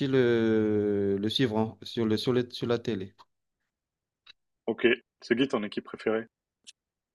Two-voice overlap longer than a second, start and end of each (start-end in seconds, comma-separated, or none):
none